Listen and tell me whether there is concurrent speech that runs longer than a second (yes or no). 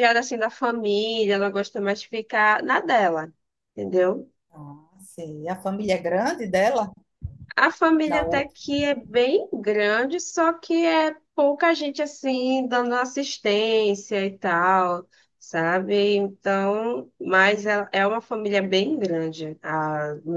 no